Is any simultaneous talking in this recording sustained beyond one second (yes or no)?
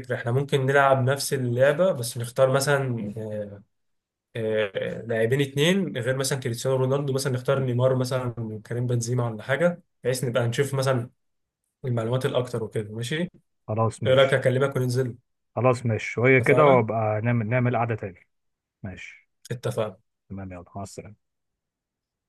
no